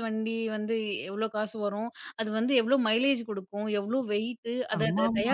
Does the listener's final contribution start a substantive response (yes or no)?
no